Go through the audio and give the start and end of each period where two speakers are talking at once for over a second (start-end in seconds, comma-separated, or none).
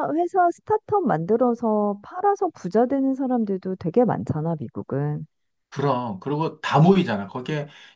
none